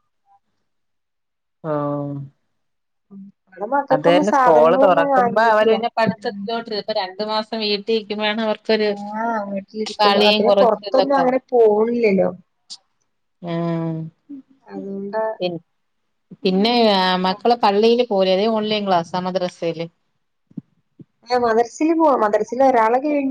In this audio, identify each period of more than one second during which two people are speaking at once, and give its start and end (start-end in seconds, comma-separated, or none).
3.9-5.8